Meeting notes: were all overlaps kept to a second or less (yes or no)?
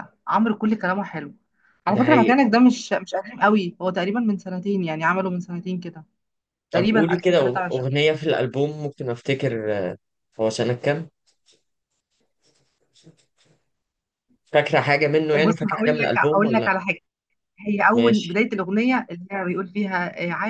no